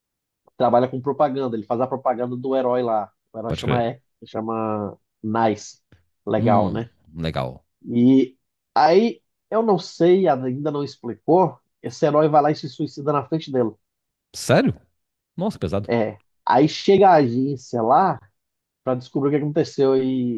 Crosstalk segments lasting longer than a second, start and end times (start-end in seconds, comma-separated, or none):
none